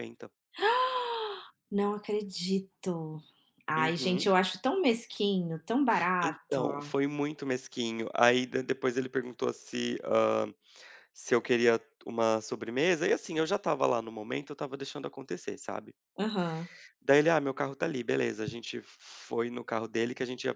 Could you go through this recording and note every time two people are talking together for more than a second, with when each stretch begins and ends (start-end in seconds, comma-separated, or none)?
none